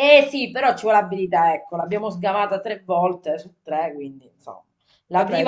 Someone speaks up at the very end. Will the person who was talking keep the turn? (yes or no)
yes